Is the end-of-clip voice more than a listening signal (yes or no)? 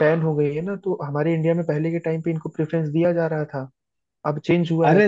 yes